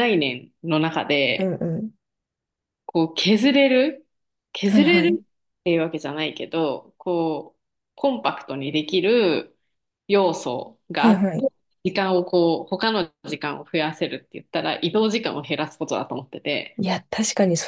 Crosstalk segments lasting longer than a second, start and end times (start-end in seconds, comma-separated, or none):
none